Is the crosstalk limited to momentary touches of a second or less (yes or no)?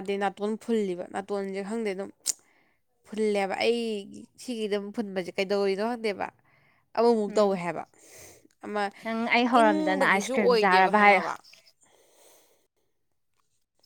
no